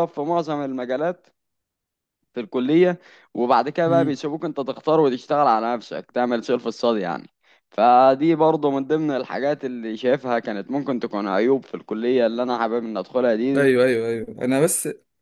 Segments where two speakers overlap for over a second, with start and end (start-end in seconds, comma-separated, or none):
none